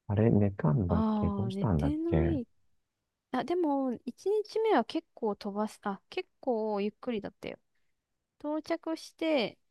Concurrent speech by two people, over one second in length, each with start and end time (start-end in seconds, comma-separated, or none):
0.9-2.4